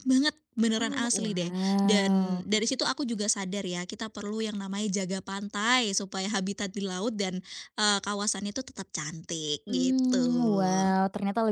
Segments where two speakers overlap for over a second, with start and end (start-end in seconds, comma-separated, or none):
0.8-2.5